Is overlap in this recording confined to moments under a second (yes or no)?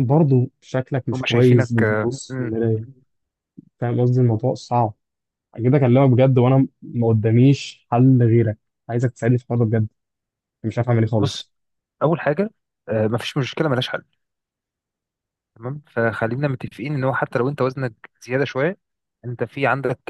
no